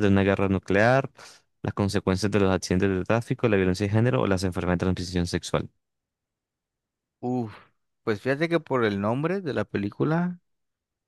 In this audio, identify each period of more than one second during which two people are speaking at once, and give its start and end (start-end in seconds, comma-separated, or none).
none